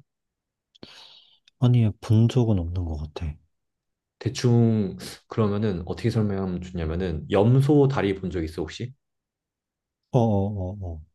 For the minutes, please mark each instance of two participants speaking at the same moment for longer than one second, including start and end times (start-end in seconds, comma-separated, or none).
none